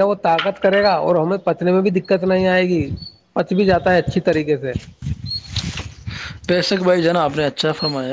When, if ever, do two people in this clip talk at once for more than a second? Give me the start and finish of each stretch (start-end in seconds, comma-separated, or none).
none